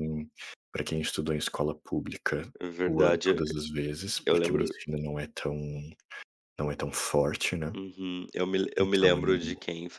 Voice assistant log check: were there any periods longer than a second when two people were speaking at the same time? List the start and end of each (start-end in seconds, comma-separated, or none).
none